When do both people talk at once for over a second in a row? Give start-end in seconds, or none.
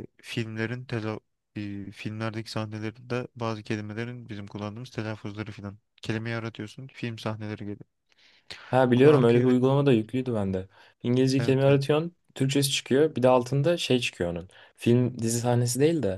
none